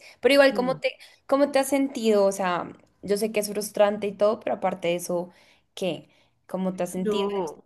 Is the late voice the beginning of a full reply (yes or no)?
yes